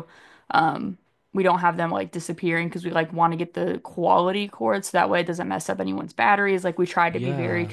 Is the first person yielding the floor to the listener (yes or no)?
yes